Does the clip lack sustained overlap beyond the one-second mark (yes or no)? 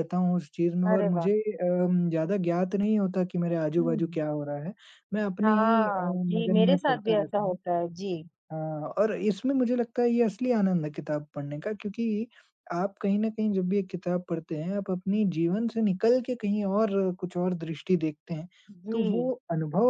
no